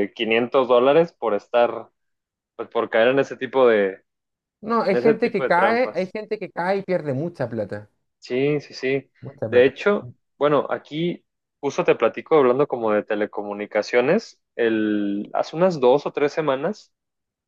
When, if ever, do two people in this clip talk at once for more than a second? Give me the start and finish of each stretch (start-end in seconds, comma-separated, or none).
4.8-6.1